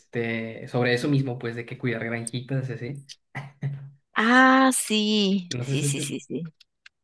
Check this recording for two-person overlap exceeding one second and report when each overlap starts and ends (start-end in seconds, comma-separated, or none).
none